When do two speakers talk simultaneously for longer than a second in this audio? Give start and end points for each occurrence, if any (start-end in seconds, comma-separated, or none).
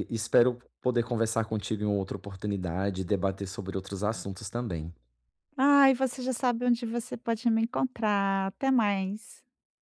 none